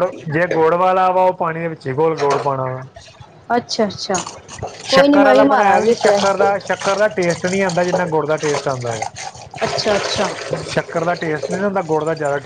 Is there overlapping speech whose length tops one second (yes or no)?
yes